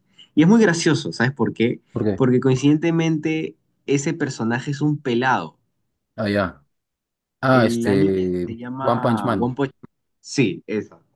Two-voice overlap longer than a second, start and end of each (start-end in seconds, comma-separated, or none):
7.5-9.6